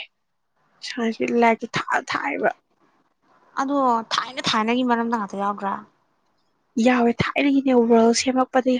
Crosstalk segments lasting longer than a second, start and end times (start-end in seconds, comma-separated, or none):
none